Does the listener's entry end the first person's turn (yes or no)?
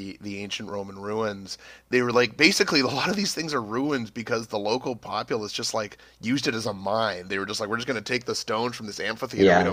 no